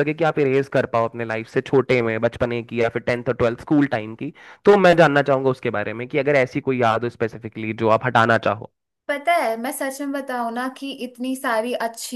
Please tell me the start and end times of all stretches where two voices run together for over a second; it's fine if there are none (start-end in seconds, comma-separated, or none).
none